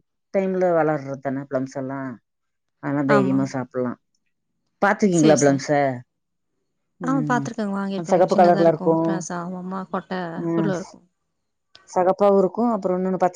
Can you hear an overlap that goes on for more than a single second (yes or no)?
yes